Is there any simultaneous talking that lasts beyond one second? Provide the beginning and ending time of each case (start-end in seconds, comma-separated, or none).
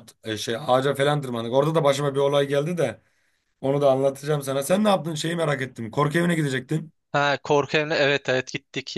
none